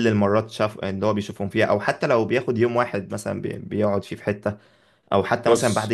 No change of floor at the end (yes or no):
yes